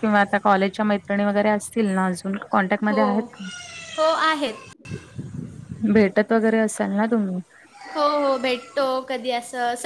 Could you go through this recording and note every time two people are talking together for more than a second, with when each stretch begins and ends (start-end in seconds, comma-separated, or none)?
none